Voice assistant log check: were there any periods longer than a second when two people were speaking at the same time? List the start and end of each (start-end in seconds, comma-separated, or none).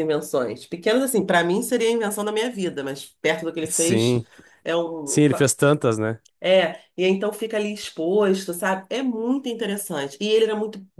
none